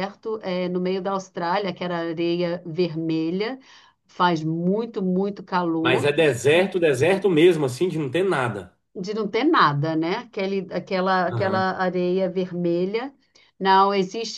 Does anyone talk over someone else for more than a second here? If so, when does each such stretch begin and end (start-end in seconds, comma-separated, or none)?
none